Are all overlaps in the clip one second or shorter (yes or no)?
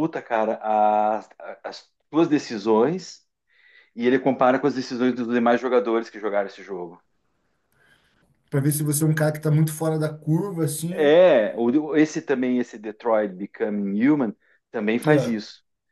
yes